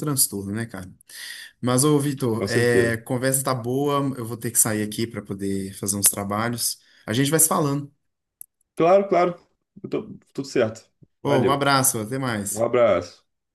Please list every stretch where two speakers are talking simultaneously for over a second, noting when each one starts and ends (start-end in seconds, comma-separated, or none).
none